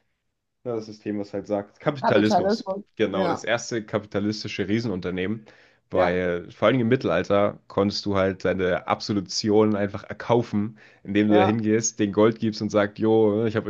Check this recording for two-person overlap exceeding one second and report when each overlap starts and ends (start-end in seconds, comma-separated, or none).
2.0-3.5